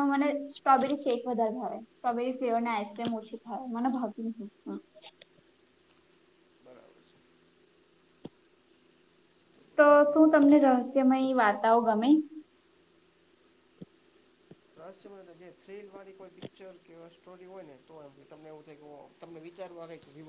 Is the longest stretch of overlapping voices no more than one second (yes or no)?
yes